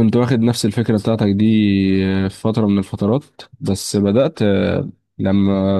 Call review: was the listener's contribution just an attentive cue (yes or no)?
no